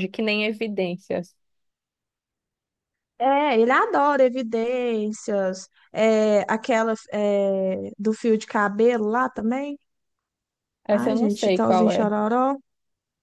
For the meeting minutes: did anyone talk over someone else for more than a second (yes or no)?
yes